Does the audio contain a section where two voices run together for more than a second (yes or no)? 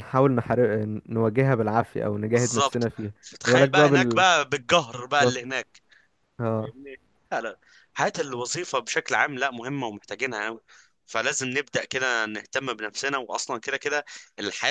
yes